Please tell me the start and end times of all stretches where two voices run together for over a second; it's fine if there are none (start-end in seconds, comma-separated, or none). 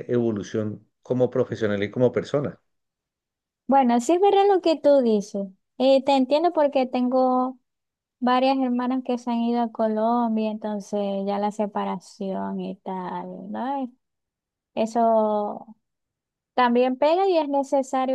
none